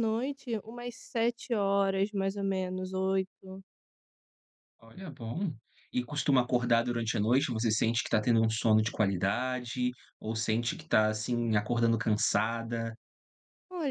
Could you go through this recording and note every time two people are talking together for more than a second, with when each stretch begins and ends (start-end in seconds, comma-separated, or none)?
none